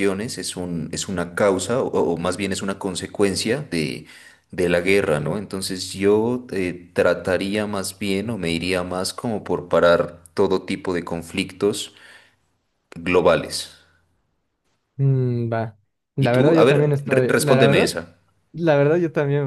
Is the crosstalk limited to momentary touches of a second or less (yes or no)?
no